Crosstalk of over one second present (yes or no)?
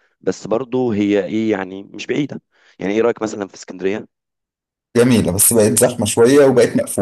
no